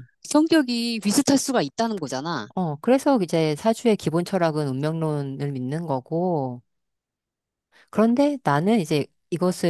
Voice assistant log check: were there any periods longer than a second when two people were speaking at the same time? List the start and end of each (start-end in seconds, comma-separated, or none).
none